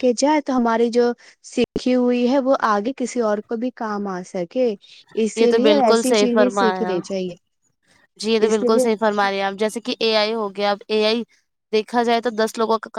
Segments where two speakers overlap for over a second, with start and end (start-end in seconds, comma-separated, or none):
5.3-7.0